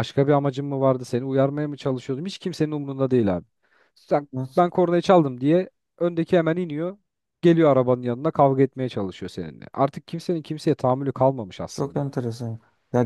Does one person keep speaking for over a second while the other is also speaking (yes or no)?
no